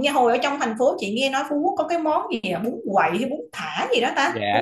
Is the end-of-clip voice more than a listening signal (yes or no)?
yes